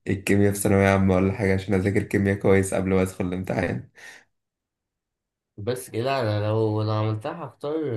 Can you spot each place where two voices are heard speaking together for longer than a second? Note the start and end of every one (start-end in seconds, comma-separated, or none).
none